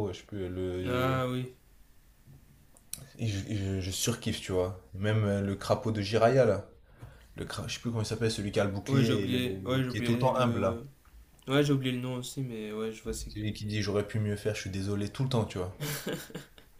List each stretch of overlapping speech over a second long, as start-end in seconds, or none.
8.9-10.8